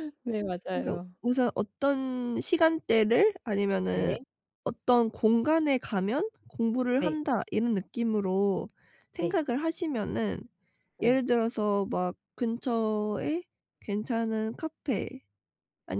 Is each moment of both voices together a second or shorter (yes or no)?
yes